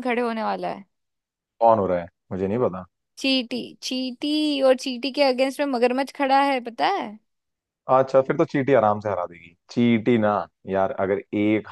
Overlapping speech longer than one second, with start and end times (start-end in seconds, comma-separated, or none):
none